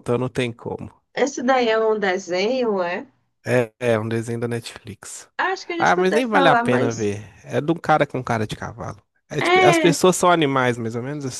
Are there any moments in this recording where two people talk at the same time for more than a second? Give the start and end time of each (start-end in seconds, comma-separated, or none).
5.8-7.1